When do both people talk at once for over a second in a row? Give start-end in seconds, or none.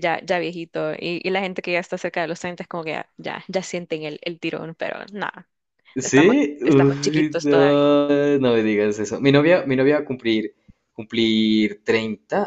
6.0-7.8